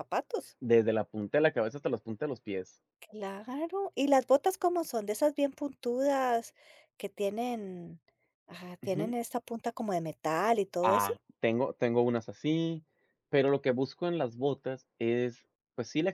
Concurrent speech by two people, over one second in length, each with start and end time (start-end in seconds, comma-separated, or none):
none